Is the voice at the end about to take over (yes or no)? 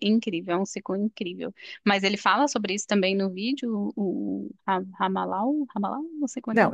yes